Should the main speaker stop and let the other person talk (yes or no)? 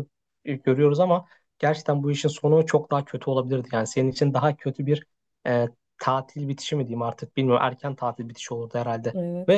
no